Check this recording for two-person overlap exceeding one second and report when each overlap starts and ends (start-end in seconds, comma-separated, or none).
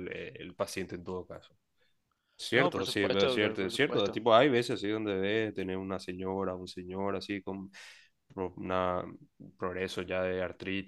2.5-4.2